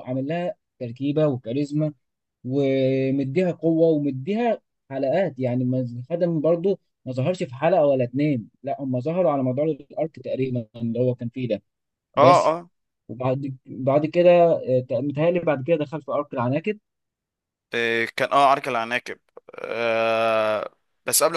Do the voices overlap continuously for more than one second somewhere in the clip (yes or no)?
no